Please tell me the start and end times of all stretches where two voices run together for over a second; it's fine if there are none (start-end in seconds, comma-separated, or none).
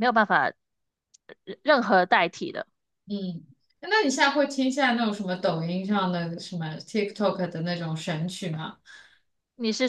none